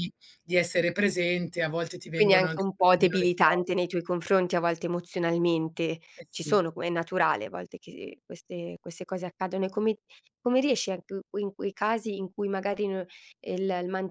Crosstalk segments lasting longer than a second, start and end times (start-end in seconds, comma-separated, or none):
2.1-3.9